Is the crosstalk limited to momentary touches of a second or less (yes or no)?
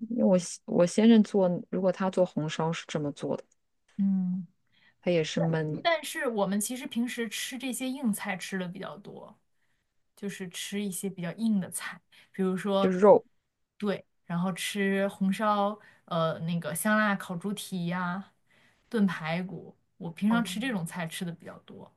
yes